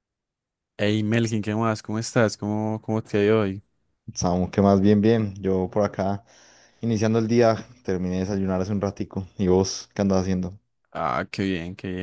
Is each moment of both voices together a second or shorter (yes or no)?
yes